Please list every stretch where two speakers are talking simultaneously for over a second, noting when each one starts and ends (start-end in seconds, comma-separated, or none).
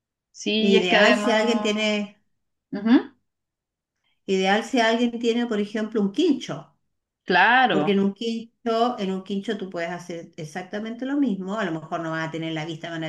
0.6-1.9